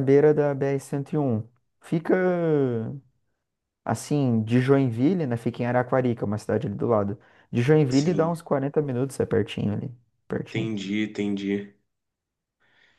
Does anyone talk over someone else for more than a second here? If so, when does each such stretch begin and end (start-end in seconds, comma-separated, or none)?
none